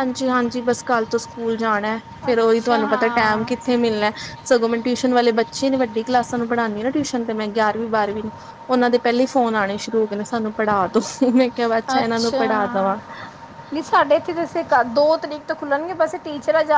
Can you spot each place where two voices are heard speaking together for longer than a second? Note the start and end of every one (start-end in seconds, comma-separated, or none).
2.3-3.7